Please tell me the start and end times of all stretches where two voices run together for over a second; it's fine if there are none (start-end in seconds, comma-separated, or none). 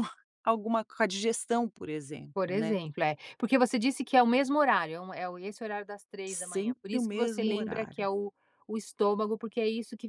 6.3-8.1